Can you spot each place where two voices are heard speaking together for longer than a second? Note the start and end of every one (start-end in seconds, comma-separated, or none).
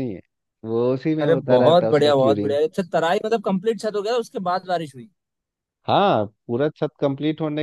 1.2-2.6